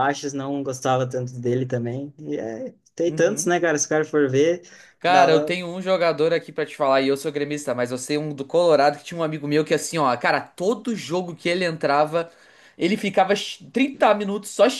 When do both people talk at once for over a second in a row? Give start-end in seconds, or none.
none